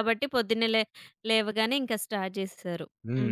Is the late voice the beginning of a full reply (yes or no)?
yes